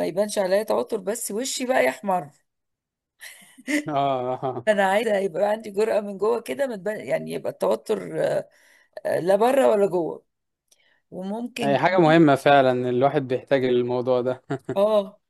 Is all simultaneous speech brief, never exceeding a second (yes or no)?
yes